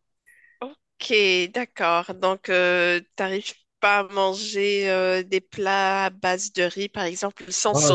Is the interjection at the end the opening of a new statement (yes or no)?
yes